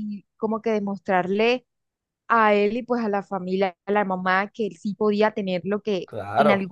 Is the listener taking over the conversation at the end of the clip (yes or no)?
no